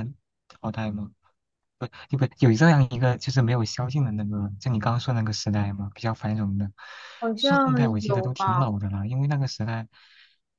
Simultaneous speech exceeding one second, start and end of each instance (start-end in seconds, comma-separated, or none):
7.4-8.7